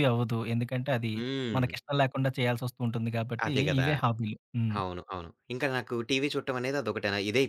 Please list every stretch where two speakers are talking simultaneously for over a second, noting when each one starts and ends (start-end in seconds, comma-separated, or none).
none